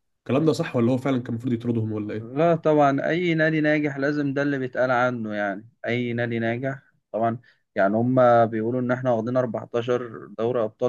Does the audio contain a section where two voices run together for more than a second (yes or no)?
no